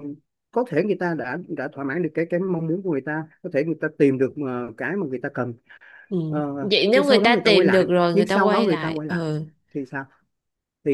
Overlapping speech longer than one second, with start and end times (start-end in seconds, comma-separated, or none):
6.6-9.2